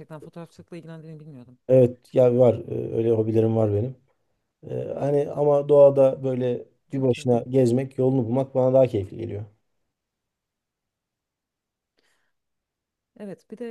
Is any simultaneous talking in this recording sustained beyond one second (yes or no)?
no